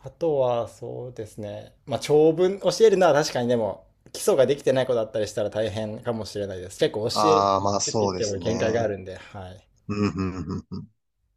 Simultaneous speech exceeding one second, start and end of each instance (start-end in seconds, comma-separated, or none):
7.1-8.9